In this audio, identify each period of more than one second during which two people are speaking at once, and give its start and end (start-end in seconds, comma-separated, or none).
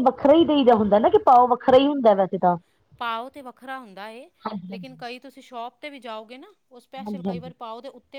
none